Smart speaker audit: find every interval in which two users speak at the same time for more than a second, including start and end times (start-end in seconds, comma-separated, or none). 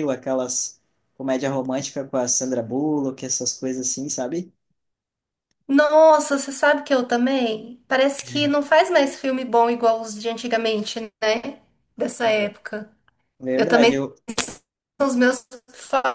none